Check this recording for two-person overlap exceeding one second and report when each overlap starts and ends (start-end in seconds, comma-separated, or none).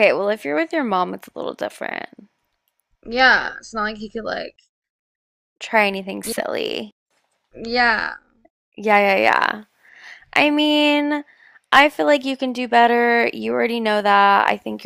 none